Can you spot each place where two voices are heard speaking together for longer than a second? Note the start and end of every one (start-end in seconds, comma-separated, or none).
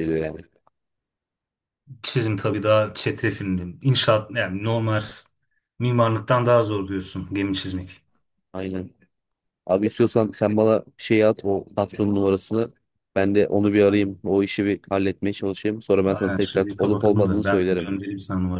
16.1-17.9